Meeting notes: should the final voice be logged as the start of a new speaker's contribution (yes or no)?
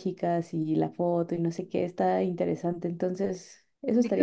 yes